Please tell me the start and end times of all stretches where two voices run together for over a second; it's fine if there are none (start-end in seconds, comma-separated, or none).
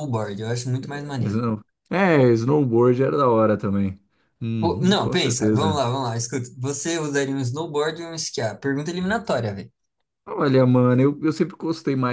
4.6-5.8